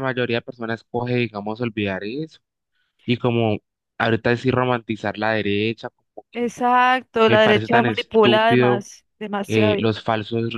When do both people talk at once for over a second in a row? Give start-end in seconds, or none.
7.2-8.8